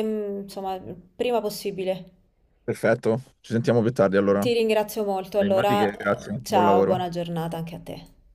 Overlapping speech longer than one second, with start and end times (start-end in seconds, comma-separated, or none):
5.4-7.1